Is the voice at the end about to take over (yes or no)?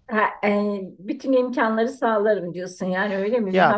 yes